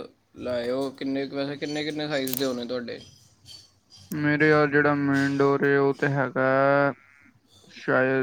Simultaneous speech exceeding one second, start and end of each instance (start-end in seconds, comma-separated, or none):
none